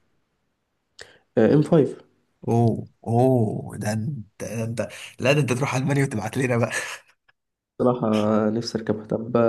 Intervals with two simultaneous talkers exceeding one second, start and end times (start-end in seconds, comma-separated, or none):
none